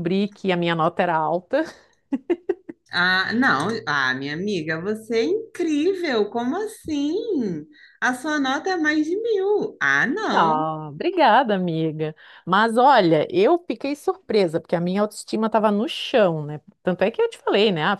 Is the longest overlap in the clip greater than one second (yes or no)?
no